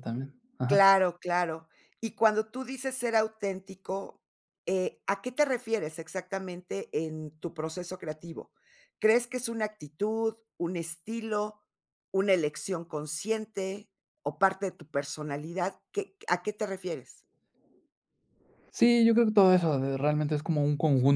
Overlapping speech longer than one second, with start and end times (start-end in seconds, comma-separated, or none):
none